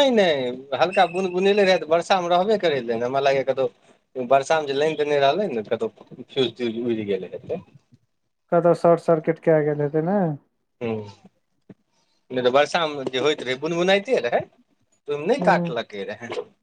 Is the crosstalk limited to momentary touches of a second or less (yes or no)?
yes